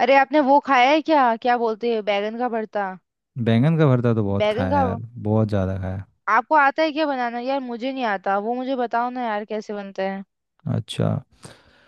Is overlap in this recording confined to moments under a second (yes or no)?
yes